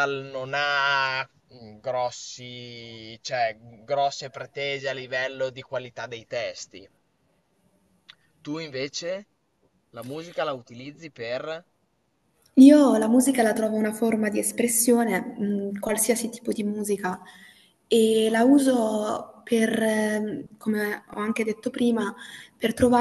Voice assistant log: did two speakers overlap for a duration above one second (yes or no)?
no